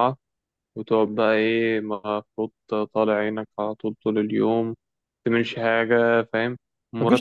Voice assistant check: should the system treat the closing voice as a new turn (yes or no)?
no